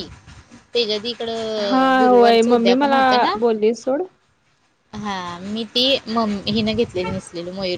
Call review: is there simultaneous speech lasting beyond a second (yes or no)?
yes